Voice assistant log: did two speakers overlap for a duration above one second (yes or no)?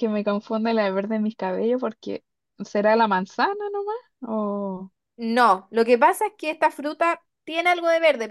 no